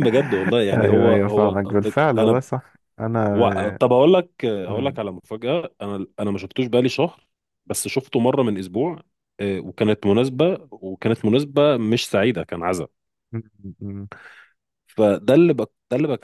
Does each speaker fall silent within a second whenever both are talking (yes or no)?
no